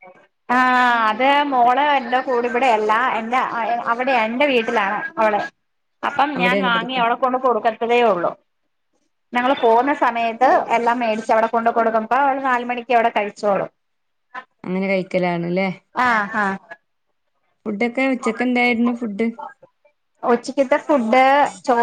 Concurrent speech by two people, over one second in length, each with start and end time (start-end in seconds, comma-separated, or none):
none